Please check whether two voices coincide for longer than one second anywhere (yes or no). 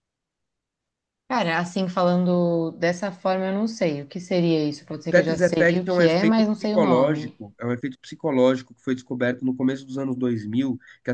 yes